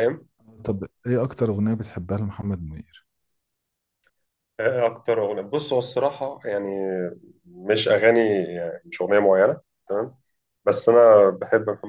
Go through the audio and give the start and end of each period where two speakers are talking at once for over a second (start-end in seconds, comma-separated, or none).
none